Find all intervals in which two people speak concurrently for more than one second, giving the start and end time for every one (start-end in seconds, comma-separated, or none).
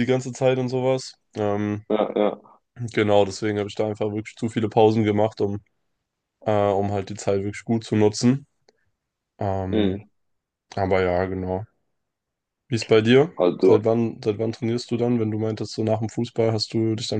none